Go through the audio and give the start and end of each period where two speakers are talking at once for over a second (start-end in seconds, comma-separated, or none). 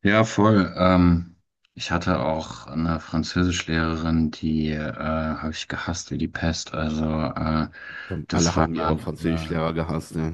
8.3-9.5